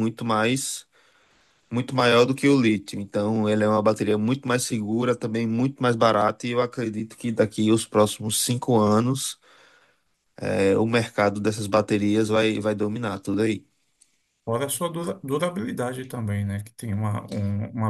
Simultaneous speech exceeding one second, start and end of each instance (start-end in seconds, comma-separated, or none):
none